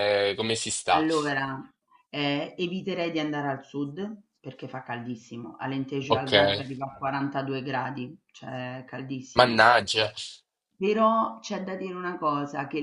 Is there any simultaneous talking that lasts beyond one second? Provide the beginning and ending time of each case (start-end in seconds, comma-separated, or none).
none